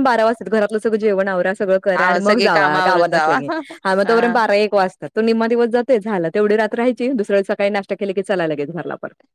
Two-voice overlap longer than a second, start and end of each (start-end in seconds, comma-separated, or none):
1.9-3.4